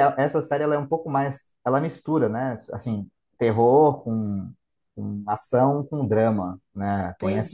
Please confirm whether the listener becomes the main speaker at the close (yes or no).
yes